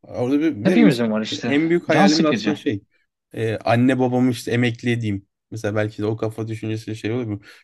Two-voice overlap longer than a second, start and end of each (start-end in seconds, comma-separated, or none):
0.6-2.6